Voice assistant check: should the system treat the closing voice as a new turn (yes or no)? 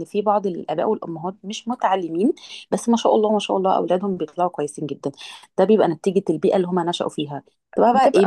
no